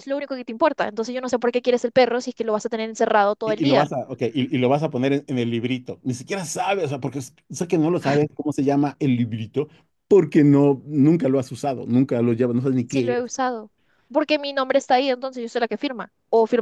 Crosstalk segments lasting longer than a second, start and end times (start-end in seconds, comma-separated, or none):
none